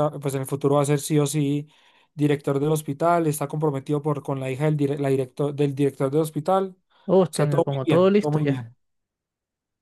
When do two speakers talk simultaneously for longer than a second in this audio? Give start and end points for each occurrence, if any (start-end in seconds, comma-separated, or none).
7.1-8.7